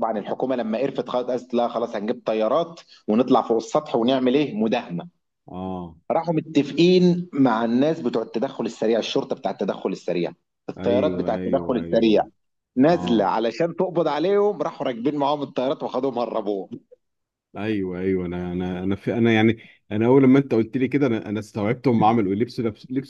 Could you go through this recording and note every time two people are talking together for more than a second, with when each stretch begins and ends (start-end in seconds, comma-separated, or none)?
10.8-12.2